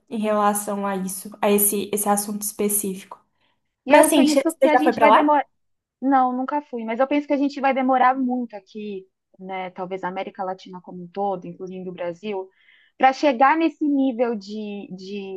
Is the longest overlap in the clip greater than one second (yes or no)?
yes